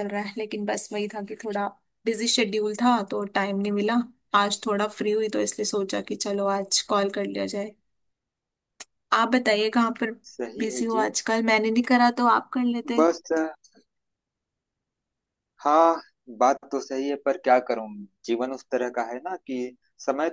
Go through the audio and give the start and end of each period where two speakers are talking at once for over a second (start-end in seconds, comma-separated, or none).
none